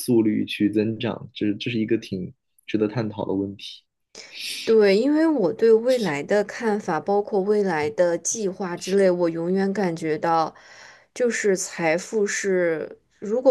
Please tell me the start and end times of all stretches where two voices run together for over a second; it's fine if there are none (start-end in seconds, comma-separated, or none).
none